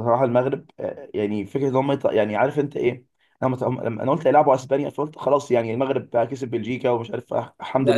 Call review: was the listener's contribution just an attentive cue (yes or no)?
no